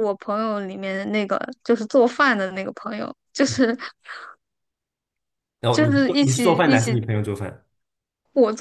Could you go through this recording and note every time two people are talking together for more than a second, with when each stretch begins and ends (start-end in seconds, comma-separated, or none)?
5.7-7.0